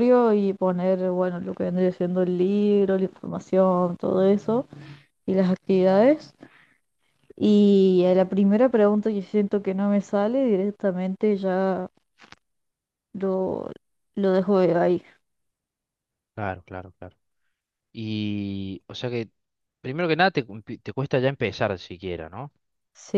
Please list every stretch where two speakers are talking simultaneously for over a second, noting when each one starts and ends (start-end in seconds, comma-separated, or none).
none